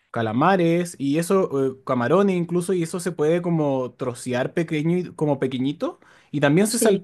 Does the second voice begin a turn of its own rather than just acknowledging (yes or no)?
no